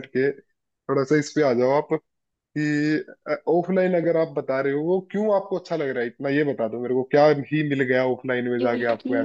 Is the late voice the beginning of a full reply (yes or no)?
yes